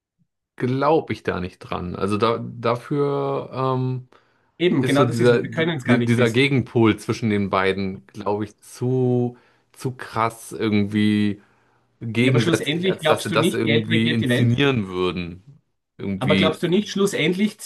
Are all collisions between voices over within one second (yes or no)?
no